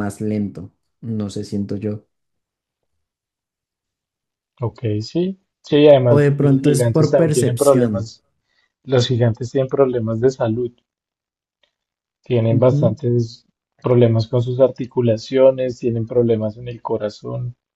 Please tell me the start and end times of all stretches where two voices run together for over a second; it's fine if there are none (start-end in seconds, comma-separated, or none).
6.1-7.9